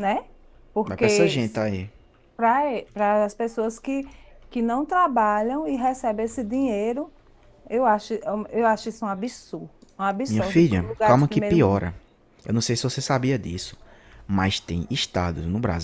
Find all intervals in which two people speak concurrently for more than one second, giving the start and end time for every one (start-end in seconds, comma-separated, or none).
10.3-11.9